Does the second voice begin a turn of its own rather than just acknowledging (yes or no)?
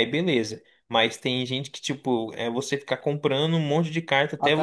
no